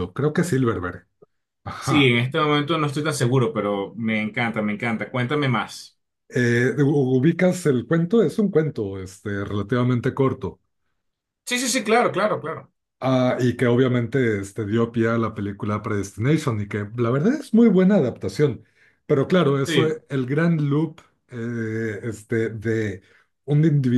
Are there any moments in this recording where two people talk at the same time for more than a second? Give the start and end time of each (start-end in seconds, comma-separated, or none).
none